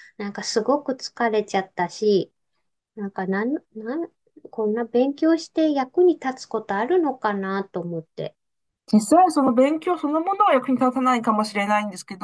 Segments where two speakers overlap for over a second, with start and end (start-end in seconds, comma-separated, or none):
none